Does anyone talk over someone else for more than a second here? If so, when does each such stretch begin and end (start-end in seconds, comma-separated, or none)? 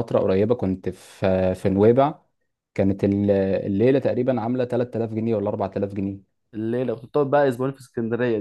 none